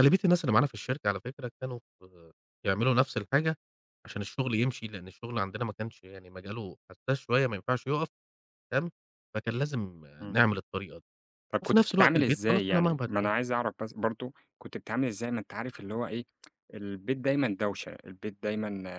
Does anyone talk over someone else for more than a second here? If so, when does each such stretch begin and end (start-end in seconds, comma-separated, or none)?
11.6-13.3